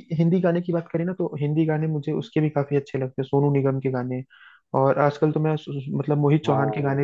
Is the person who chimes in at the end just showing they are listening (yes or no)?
yes